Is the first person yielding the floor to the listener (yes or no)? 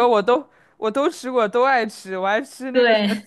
no